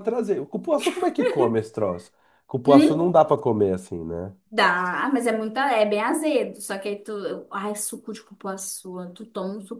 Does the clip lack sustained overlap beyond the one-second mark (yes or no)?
yes